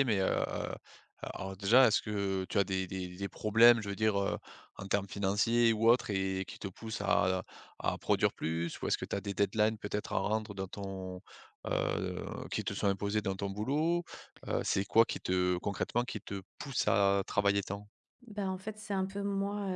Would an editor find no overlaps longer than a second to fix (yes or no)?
yes